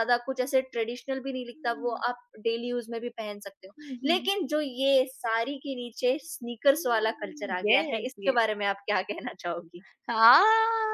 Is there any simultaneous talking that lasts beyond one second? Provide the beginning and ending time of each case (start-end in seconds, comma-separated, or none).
6.7-8.4